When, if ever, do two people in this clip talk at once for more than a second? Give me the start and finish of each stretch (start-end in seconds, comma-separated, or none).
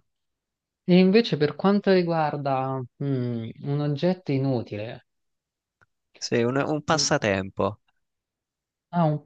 none